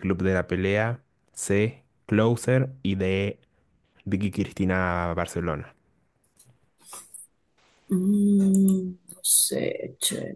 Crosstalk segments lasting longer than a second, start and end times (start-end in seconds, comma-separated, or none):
none